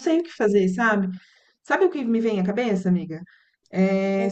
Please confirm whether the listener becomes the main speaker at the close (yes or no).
no